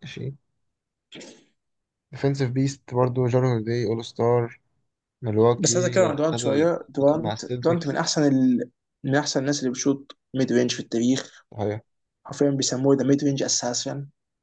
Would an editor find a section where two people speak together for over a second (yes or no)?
yes